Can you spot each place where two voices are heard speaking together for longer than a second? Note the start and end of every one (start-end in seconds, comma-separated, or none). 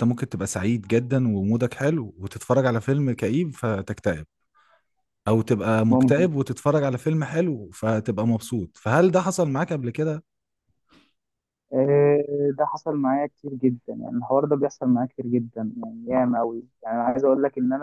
none